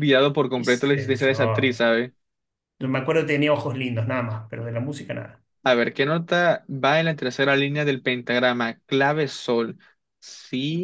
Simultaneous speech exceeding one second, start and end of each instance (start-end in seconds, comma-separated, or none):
0.5-1.8